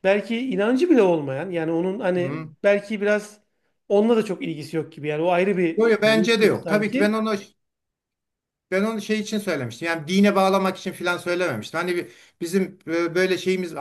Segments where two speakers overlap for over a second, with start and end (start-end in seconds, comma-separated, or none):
5.8-7.2